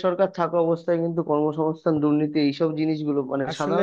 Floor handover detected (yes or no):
no